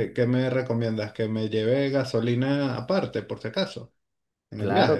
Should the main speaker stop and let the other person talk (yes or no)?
yes